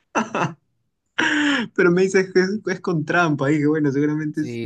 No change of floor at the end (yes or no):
no